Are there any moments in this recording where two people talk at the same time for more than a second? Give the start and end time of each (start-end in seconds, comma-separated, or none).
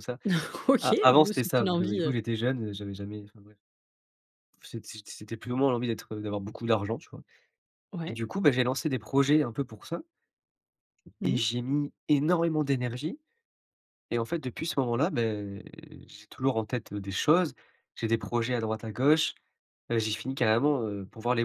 0.8-2.2